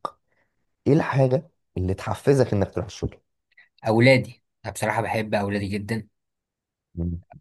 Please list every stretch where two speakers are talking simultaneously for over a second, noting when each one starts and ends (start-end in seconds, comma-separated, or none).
none